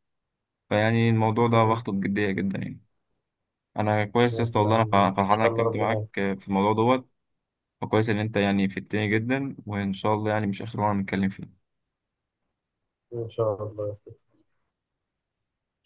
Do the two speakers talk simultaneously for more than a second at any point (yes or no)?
yes